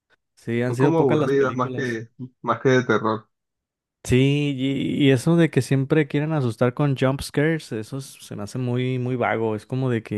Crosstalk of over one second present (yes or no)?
yes